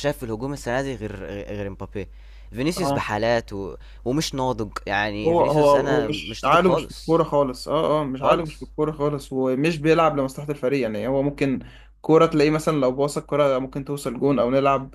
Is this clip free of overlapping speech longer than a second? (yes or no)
no